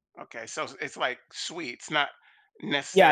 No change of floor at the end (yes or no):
no